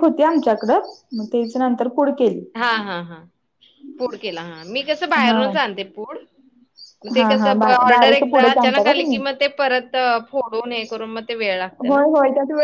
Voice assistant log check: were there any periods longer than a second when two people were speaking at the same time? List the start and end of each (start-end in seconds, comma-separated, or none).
7.2-9.2